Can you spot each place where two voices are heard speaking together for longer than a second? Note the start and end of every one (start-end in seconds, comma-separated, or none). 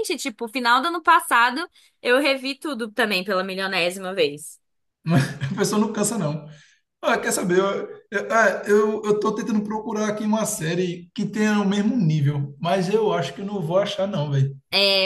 none